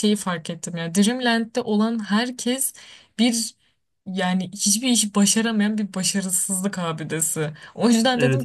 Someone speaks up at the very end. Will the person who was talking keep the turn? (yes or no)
yes